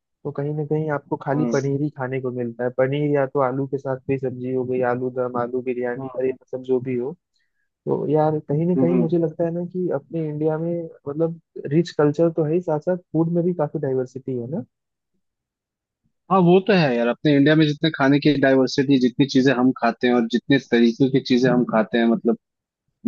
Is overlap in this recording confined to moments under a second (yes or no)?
yes